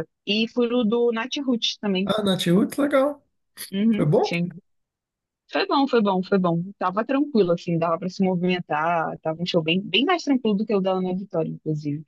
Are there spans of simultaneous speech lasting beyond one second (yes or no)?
no